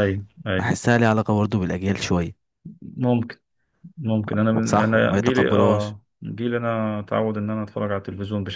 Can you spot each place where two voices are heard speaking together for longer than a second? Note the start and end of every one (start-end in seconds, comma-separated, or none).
4.6-5.9